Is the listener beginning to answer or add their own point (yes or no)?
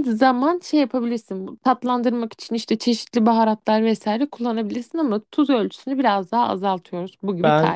yes